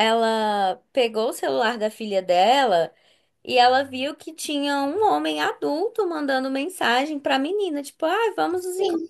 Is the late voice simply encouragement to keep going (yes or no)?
yes